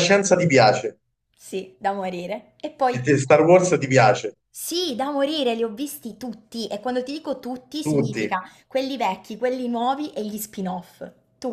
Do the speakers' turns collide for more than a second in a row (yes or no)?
no